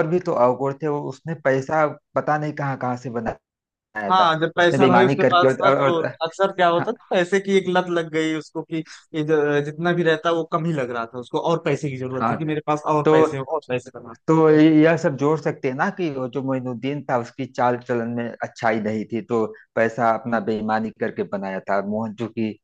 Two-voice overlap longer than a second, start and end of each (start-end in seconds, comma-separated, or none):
4.1-6.1